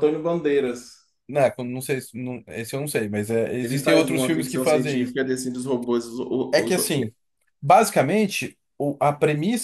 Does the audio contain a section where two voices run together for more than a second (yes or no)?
yes